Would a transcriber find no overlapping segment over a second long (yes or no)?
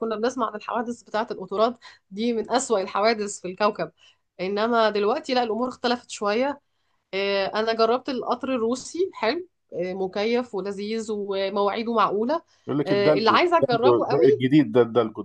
no